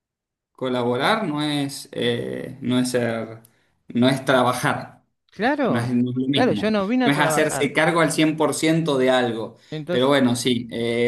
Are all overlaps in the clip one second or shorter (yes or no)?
no